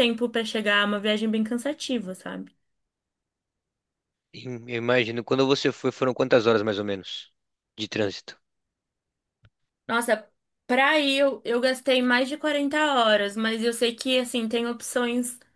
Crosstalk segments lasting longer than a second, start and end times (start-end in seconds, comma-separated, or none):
none